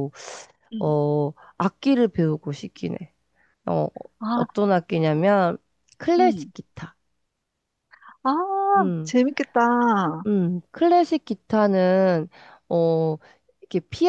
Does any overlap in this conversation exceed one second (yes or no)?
no